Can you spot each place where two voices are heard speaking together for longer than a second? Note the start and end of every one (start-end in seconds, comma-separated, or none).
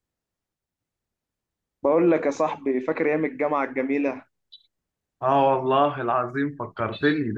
none